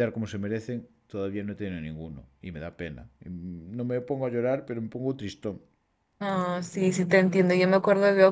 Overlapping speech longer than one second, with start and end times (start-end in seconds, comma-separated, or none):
none